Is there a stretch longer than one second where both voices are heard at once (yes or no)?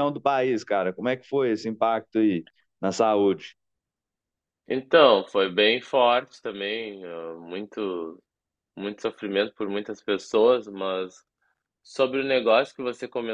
no